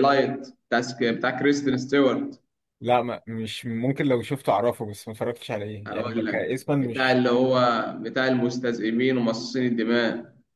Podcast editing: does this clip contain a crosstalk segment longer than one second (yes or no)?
yes